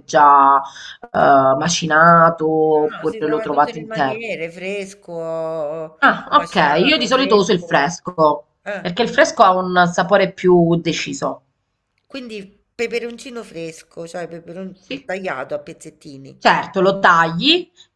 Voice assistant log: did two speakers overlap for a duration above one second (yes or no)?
yes